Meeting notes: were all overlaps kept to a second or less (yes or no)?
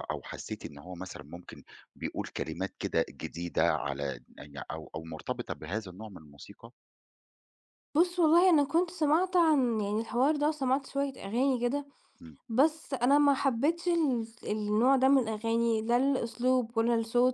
yes